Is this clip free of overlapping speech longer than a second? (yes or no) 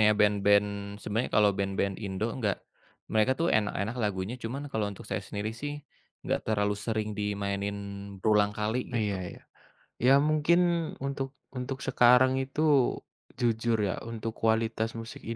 yes